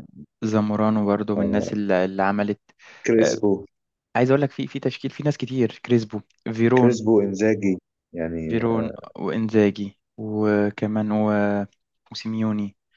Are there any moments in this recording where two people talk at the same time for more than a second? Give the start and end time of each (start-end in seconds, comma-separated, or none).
none